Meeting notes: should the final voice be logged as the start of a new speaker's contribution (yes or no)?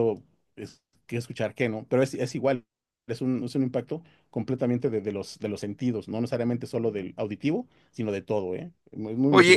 yes